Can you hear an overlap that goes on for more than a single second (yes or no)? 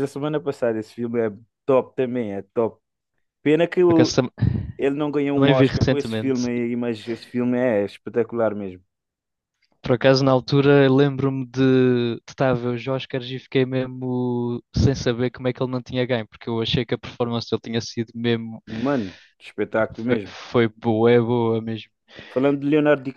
yes